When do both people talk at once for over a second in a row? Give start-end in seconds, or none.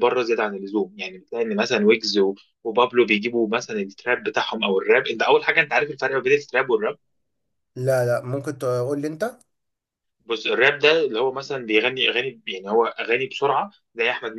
none